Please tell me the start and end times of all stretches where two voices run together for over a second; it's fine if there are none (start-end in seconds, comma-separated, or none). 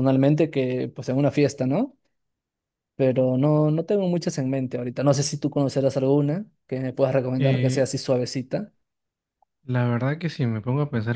none